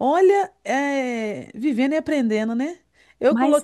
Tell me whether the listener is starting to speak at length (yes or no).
no